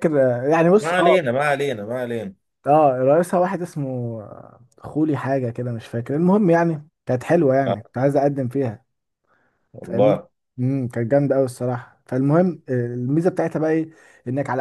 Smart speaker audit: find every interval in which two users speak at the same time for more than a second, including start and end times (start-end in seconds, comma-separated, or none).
none